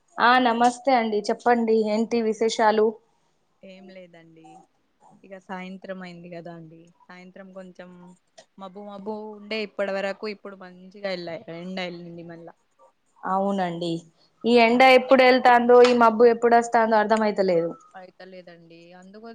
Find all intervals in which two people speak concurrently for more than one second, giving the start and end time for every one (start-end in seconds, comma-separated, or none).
none